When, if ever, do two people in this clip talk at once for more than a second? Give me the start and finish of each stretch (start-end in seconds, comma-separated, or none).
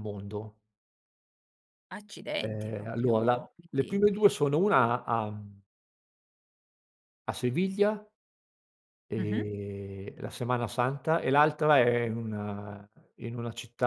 2.4-4.0